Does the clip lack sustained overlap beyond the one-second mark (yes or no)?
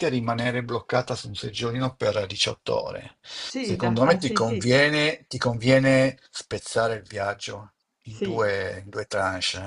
no